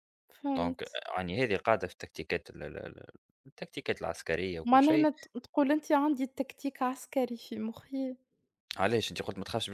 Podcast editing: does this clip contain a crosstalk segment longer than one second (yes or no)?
no